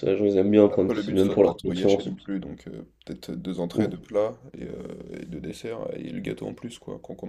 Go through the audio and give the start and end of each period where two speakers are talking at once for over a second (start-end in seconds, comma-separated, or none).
0.7-2.3